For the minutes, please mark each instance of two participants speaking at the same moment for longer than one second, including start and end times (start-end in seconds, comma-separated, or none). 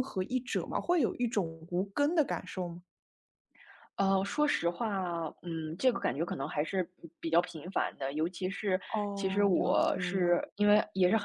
9.2-10.4